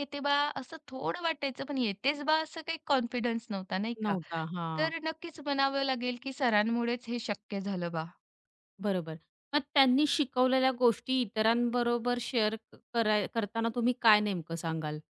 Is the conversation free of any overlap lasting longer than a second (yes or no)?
yes